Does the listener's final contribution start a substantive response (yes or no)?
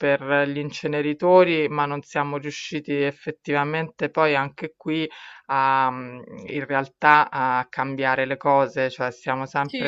no